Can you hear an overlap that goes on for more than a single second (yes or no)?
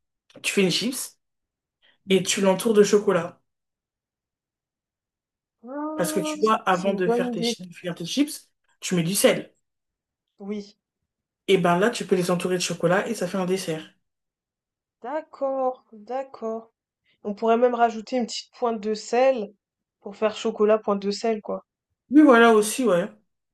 yes